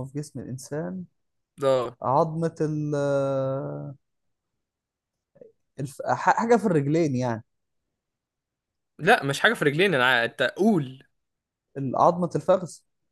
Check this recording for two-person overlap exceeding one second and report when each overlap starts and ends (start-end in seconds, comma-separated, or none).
none